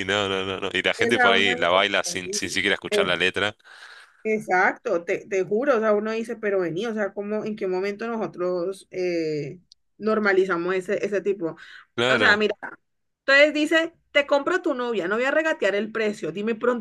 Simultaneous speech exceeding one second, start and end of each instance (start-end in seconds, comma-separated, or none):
1.0-2.5